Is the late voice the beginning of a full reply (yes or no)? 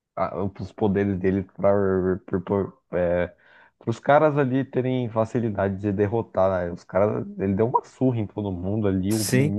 no